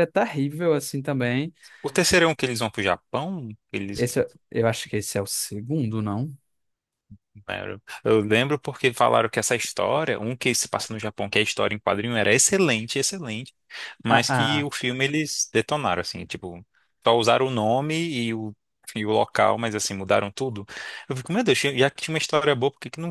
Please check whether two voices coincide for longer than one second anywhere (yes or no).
no